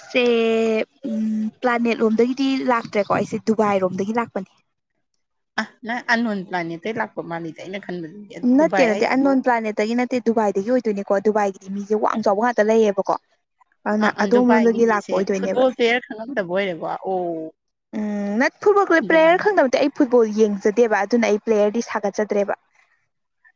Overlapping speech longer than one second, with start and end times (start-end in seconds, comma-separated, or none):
14.0-15.6